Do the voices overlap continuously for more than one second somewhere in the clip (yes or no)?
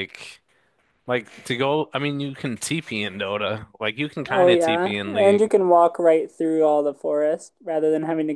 yes